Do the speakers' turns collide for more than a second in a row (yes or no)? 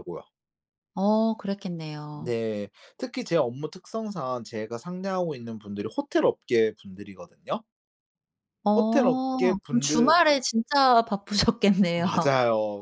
yes